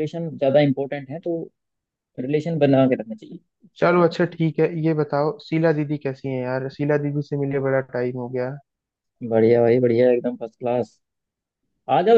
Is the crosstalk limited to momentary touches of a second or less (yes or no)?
yes